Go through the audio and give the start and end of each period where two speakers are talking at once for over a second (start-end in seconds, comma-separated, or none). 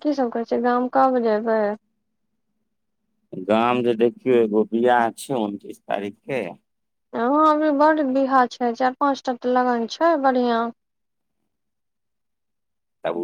none